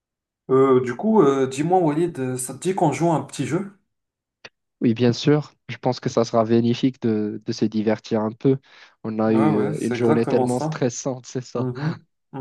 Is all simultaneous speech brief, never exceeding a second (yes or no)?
no